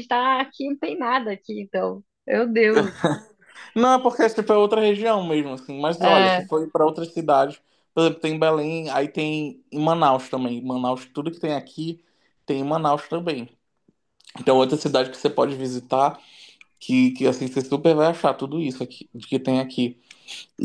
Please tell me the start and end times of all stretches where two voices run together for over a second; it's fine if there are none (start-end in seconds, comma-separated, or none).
none